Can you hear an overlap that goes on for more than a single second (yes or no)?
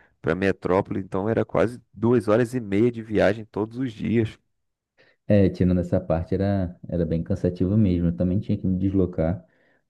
no